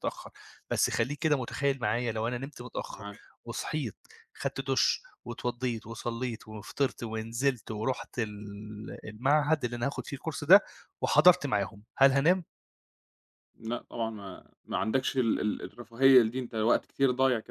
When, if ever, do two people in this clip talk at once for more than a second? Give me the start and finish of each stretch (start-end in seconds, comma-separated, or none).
none